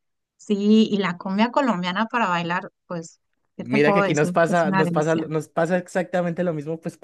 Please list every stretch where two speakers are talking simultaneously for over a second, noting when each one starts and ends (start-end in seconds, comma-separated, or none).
3.6-5.2